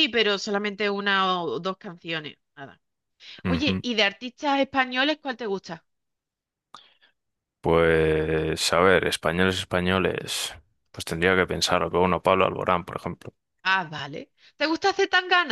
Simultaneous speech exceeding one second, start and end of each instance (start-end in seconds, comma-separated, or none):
none